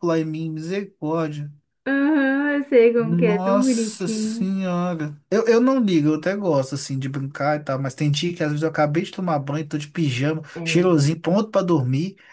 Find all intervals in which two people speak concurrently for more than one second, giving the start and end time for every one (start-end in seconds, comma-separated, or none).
3.0-4.5